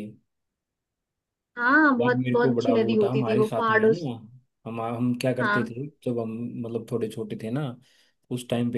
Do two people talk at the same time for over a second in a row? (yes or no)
yes